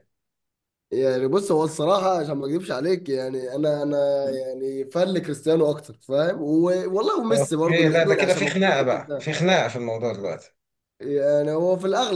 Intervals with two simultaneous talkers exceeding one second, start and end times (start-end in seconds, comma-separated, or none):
7.3-9.3